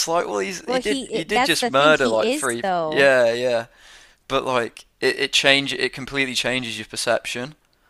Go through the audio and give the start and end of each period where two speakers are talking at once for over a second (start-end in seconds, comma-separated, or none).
0.7-3.1